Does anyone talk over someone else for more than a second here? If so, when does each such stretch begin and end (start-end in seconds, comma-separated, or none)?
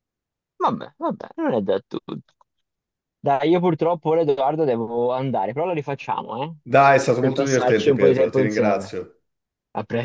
7.2-9.0